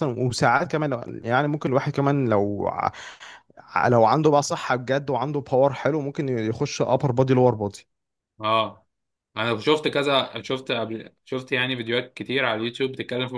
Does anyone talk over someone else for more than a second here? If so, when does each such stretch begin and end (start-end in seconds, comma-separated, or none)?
none